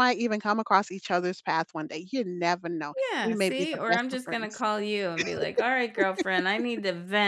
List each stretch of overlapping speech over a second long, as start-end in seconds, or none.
3.1-4.6